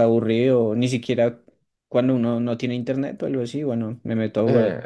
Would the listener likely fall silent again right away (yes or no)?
no